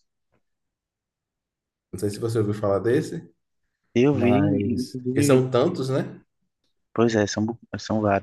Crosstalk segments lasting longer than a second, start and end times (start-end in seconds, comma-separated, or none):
4.1-5.5